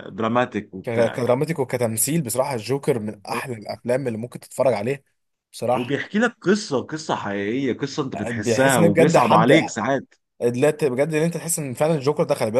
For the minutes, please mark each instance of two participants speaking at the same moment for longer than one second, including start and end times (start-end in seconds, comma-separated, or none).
8.3-9.5